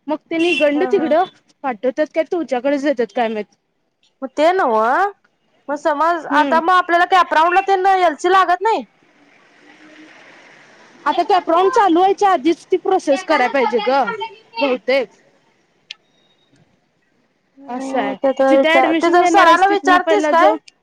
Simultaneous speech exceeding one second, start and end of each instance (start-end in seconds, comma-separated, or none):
17.8-20.3